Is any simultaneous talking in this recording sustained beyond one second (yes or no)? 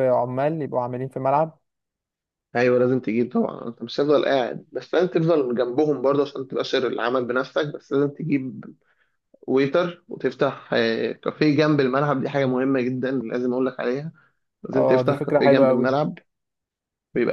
yes